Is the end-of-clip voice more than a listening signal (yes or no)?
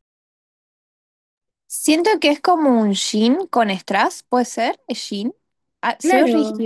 yes